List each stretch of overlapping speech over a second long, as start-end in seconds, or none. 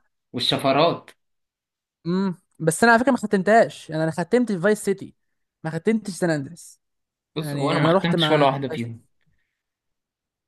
7.4-9.0